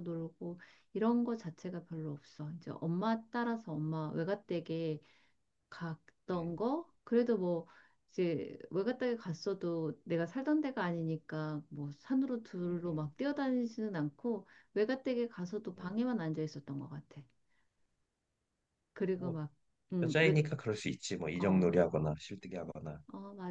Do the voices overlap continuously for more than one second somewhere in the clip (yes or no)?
no